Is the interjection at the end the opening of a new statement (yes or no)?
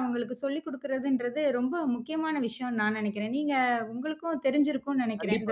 yes